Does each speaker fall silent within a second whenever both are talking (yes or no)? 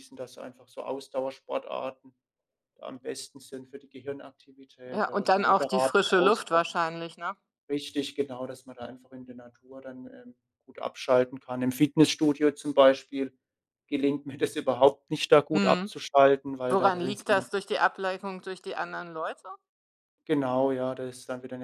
no